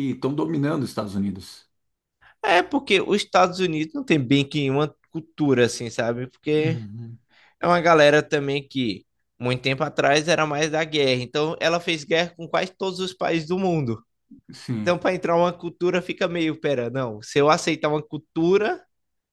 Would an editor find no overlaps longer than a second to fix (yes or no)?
yes